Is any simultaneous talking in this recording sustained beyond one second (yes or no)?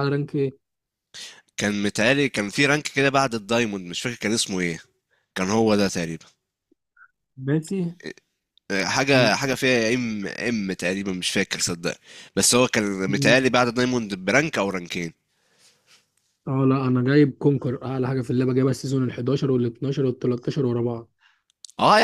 no